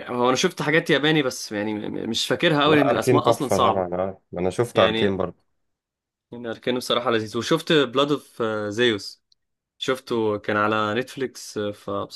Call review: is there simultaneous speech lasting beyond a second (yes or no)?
yes